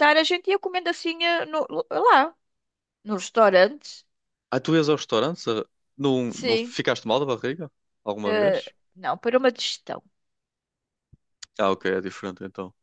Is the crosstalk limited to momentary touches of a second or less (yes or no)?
yes